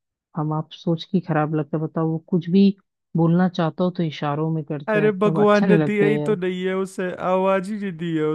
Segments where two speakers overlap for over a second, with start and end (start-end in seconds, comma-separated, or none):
4.9-6.4